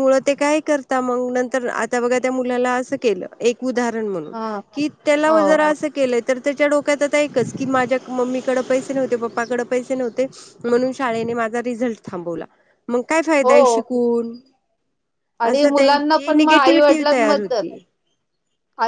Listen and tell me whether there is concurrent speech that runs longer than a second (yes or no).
yes